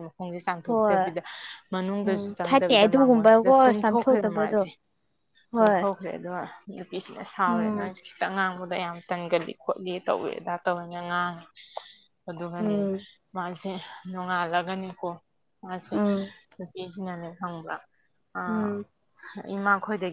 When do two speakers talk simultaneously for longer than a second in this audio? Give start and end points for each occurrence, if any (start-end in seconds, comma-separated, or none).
2.0-4.6